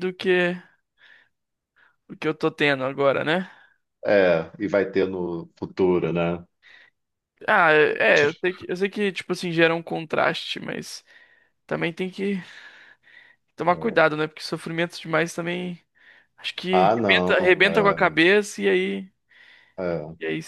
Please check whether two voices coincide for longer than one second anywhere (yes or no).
yes